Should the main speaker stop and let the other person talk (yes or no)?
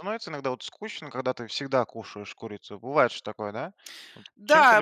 yes